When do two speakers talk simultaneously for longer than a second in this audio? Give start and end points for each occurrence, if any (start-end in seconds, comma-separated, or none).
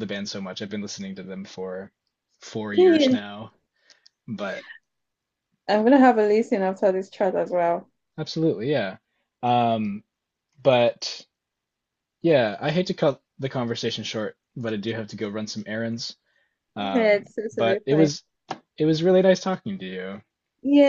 16.8-18.1